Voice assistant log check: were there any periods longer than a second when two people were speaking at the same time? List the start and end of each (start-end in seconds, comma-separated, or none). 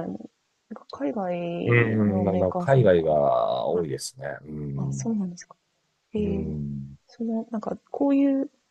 1.6-3.1